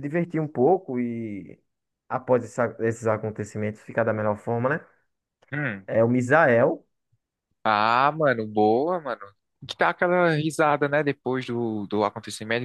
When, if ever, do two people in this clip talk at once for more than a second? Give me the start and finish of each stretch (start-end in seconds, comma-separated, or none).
none